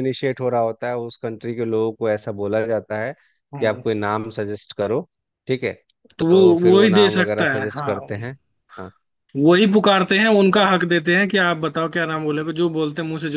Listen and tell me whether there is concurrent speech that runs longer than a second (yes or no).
yes